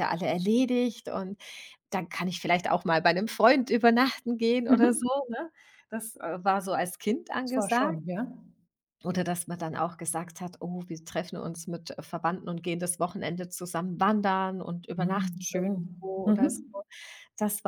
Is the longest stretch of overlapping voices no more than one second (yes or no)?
no